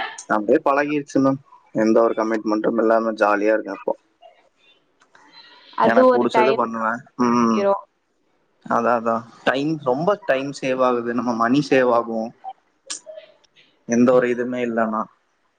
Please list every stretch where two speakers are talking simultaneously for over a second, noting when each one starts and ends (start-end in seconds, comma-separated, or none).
5.9-7.6